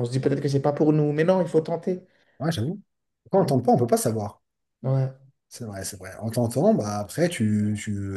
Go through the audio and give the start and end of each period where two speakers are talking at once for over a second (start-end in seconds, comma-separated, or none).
none